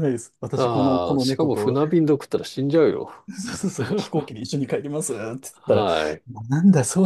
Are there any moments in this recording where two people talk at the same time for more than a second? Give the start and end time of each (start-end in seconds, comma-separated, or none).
0.5-1.8